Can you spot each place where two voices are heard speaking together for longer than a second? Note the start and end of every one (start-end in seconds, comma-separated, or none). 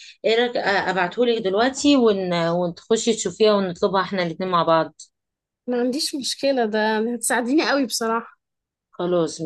none